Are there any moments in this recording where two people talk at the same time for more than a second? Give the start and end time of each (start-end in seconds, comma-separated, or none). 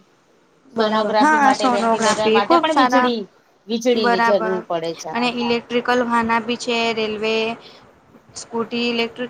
0.8-3.1